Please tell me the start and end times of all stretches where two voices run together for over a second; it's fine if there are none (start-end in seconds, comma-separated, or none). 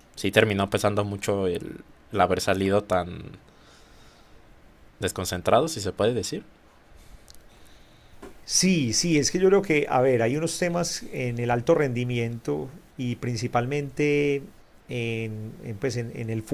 none